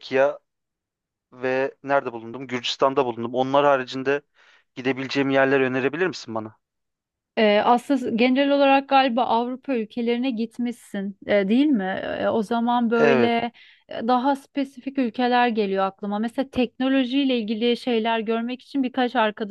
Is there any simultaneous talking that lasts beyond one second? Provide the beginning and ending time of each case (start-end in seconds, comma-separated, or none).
none